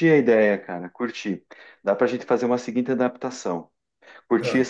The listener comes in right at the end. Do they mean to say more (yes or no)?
no